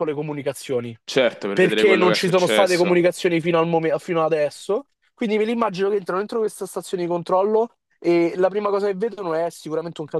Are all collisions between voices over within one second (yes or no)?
no